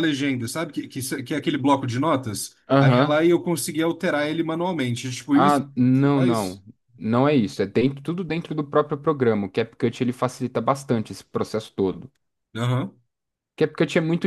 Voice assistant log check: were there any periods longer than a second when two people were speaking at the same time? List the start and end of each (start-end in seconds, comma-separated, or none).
5.3-6.6